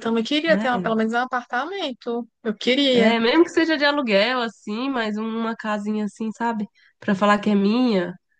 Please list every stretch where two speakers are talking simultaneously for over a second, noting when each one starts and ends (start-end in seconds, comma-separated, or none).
none